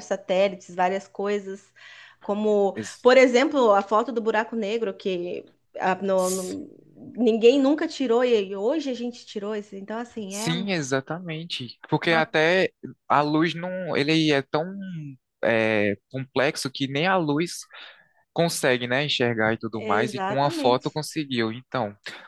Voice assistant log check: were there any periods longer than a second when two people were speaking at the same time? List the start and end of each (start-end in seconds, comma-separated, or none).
19.7-21.0